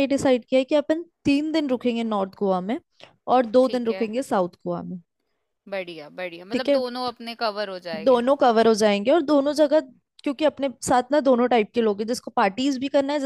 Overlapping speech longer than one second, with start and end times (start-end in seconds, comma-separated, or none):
none